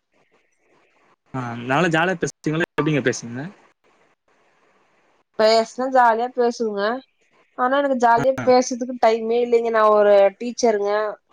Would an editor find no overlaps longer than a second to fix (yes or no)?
yes